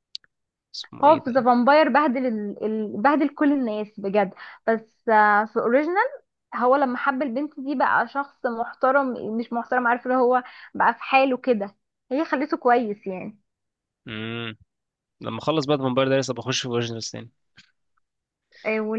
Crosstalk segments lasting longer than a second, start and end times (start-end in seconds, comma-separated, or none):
none